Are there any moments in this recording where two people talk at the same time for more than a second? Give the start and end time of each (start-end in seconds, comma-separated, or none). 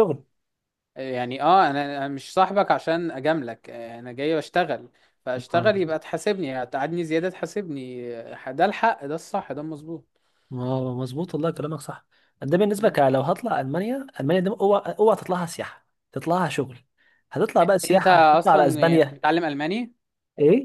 17.9-19.2